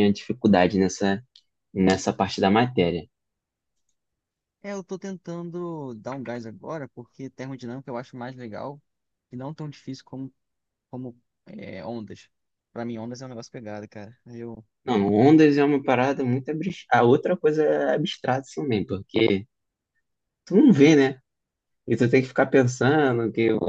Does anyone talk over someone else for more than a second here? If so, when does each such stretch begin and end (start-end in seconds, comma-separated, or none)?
none